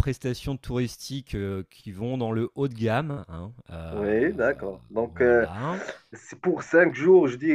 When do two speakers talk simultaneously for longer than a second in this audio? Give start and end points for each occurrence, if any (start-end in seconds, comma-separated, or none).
none